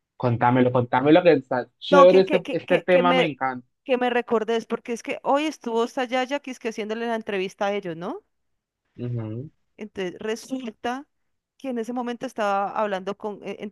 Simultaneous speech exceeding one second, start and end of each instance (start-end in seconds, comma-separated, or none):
1.9-3.3